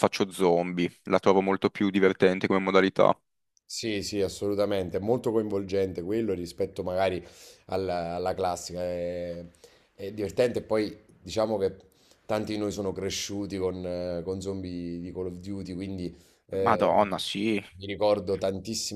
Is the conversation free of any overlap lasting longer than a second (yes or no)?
yes